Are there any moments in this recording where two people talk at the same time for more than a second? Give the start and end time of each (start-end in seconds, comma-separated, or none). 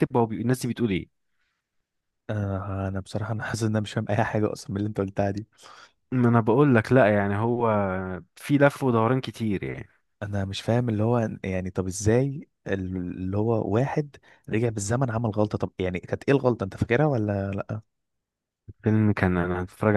none